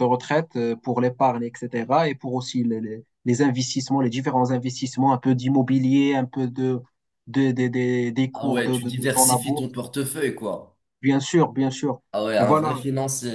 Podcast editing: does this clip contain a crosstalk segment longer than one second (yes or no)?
yes